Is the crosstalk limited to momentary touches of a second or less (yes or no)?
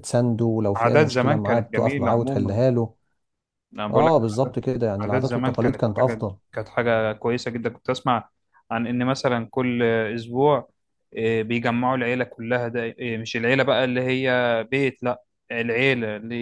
no